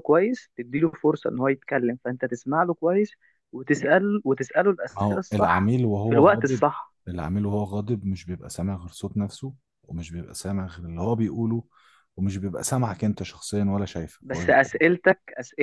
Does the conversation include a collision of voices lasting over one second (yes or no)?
yes